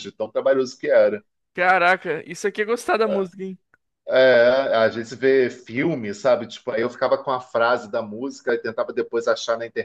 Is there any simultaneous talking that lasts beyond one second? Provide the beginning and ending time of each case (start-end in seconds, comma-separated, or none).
none